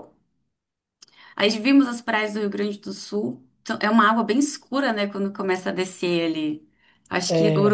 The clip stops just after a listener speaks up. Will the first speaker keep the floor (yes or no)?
yes